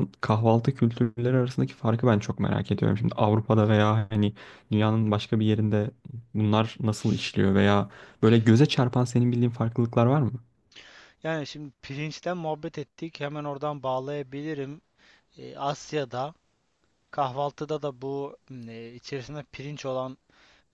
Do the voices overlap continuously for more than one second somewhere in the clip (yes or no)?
no